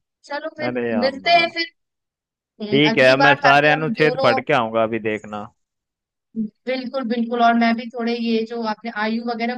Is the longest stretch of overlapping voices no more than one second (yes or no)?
no